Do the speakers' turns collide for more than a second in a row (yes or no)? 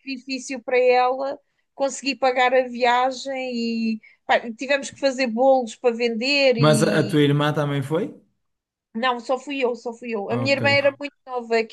no